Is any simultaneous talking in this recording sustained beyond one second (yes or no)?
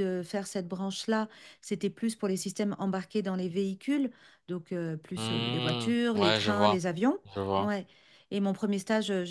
yes